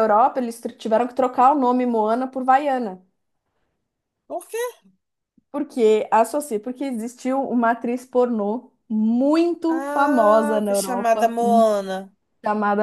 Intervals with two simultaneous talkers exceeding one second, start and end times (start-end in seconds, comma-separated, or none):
9.7-11.3